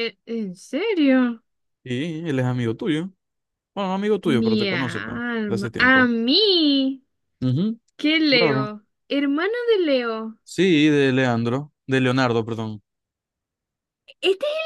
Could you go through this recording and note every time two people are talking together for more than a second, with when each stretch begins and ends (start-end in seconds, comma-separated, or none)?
4.2-6.1